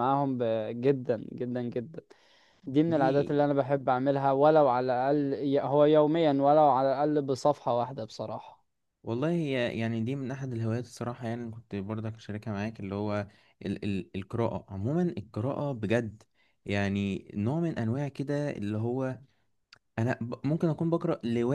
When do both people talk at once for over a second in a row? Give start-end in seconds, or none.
none